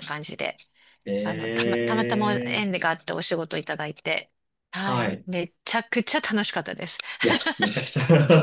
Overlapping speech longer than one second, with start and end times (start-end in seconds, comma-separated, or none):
1.2-2.7